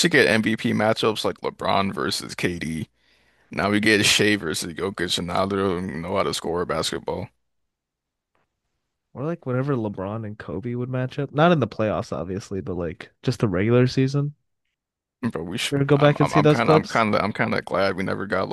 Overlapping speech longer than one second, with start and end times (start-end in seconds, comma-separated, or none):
15.7-17.0